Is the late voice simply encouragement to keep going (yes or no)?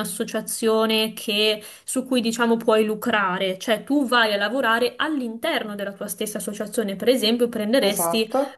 yes